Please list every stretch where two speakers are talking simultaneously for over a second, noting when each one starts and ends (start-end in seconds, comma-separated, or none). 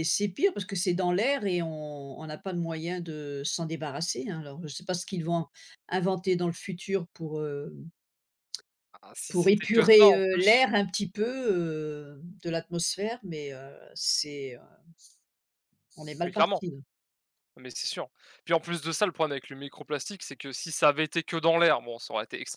9.3-10.6